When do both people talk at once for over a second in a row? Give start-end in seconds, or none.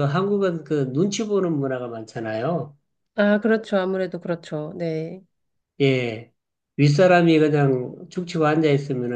none